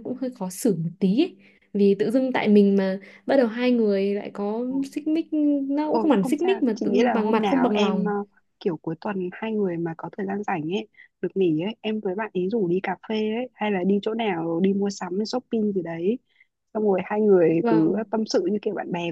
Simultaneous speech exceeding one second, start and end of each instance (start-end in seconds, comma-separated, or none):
5.9-8.1